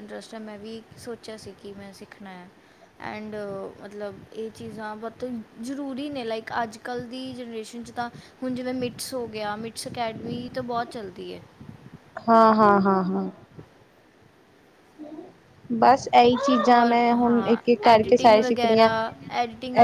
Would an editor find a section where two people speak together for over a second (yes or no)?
yes